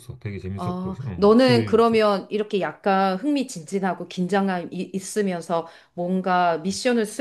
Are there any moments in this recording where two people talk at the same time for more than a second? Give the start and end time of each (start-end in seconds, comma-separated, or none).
0.6-2.1